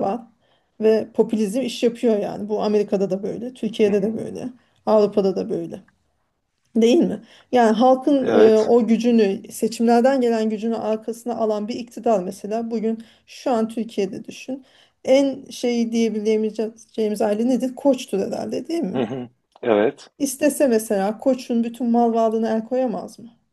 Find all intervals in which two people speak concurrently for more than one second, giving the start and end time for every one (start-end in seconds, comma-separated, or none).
none